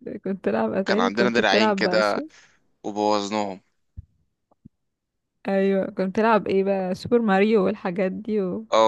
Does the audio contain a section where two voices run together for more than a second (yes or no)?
yes